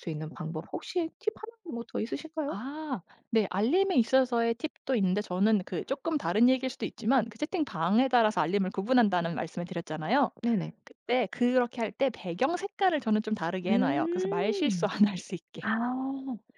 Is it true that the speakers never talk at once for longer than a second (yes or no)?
no